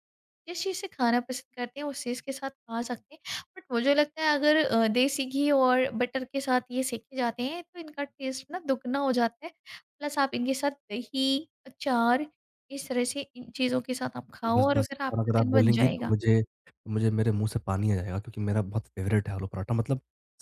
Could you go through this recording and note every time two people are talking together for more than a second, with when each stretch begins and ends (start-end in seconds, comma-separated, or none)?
14.6-16.1